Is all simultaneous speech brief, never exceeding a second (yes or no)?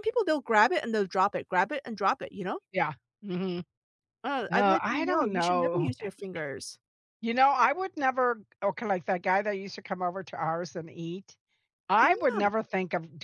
no